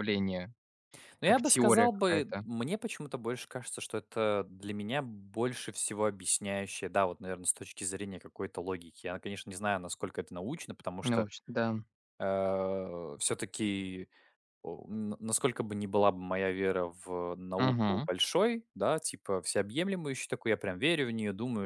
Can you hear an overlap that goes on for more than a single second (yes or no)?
yes